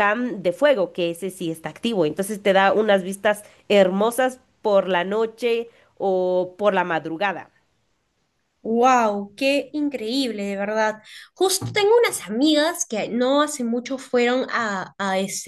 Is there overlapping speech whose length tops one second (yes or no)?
no